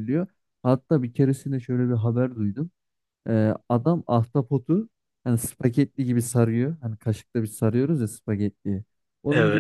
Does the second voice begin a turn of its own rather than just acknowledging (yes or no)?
no